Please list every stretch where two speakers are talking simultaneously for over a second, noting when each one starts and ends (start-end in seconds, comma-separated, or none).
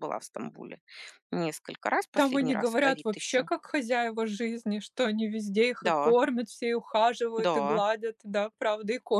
2.1-3.5